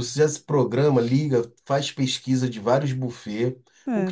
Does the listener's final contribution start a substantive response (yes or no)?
no